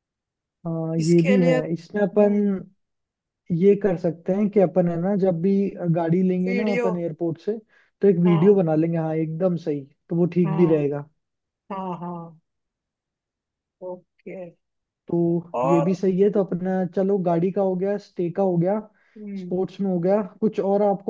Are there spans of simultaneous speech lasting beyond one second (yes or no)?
yes